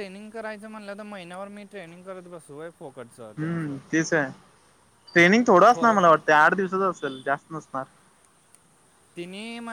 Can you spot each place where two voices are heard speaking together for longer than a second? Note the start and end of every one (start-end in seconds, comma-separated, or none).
none